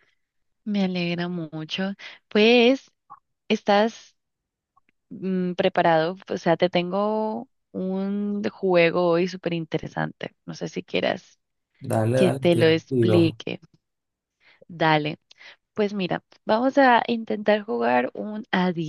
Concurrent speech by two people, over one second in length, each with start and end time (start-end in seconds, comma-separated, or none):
12.1-13.4